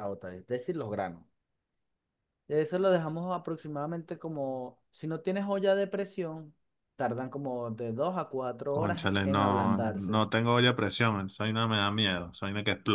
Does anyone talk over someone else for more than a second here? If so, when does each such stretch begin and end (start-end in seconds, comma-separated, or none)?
8.7-10.2